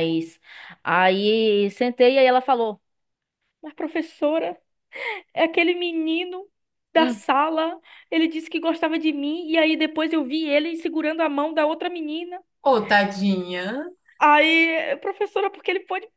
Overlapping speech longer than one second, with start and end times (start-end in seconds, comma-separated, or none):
none